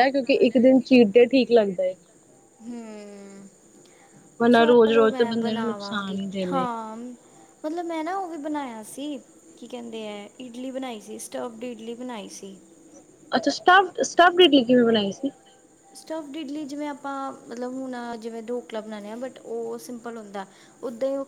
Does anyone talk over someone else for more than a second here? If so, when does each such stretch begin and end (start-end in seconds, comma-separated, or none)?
4.5-6.7